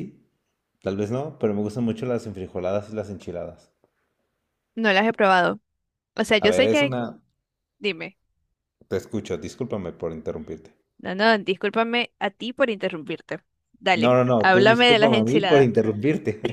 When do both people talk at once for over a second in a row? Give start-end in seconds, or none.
14.0-15.7